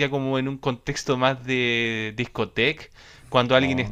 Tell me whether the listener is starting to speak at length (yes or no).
no